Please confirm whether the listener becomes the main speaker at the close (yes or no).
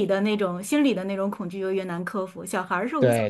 yes